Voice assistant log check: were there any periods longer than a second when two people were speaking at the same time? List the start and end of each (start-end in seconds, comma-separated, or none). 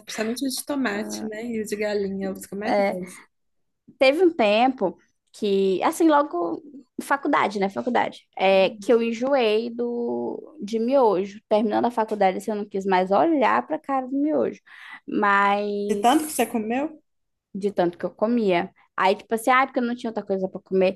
none